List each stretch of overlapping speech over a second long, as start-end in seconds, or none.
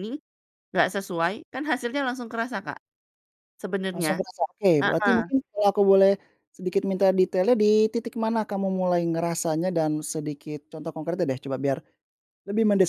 none